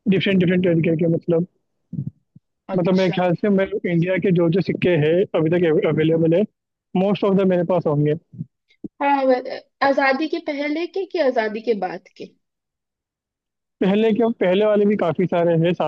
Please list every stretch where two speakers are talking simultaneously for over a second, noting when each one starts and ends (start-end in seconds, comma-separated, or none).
none